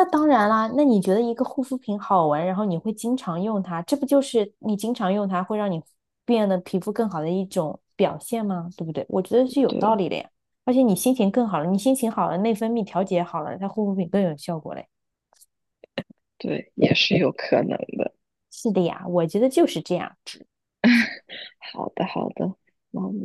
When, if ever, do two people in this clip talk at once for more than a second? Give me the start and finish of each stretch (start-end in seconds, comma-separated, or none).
none